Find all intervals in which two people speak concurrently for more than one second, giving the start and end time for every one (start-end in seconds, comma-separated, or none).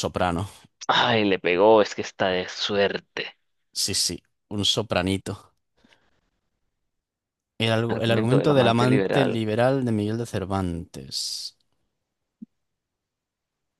7.9-9.4